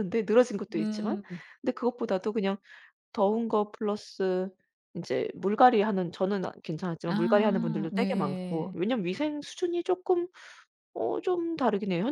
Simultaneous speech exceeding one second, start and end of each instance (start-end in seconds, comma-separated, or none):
7.0-8.8